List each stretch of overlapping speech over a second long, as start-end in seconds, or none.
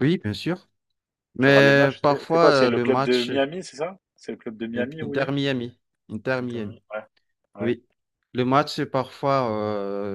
1.4-3.3